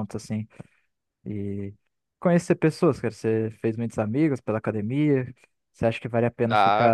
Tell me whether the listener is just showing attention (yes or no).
yes